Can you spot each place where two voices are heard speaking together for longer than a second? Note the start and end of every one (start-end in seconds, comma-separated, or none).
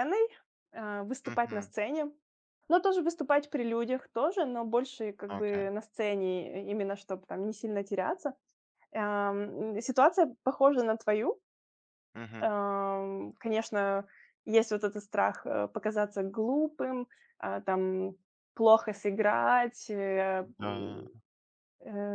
none